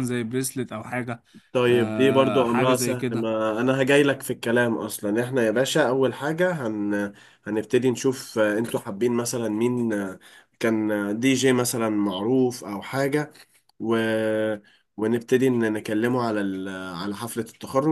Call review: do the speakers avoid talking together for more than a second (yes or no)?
no